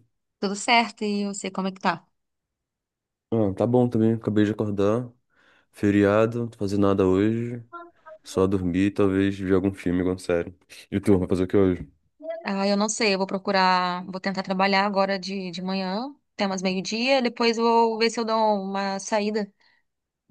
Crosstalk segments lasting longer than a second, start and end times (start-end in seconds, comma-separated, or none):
none